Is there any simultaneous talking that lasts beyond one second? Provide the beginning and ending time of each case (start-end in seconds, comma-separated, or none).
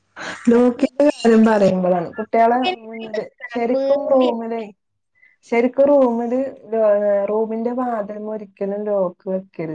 2.5-4.3